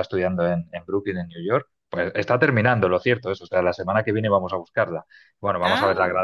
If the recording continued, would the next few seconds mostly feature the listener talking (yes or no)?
no